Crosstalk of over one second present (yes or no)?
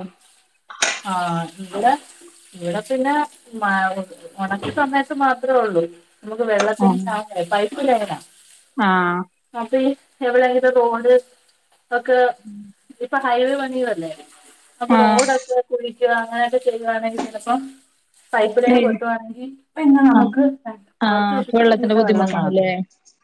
yes